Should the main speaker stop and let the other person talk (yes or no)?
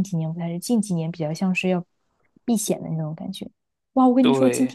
no